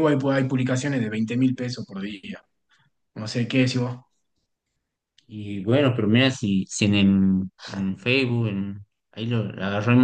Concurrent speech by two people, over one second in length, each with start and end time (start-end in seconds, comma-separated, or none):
none